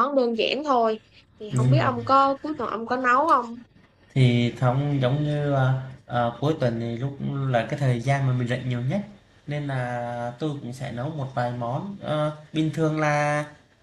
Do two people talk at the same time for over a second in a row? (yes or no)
no